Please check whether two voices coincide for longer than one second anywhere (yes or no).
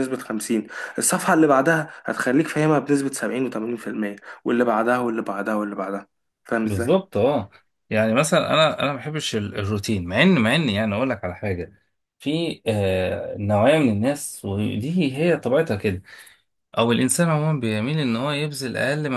no